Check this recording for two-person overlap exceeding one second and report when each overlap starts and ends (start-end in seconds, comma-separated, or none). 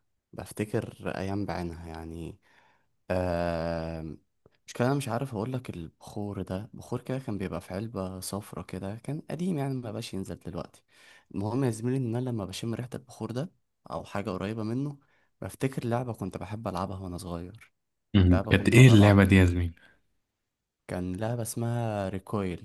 18.3-19.7